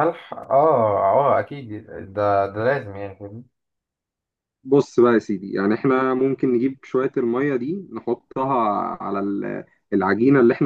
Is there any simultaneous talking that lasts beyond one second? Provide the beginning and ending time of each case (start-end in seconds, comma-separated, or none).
none